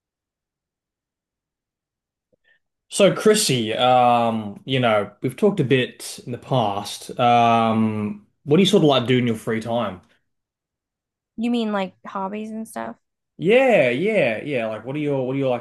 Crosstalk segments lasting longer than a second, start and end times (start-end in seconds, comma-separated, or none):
none